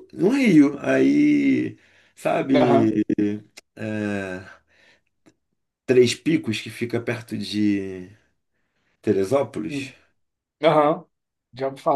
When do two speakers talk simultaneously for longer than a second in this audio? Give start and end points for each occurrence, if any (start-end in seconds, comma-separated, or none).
none